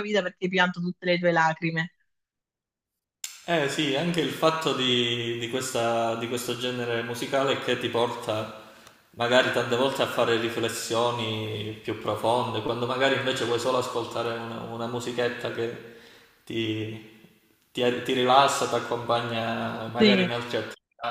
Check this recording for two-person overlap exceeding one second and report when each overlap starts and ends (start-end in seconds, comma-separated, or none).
none